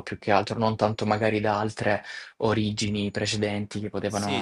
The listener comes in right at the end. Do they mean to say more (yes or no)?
yes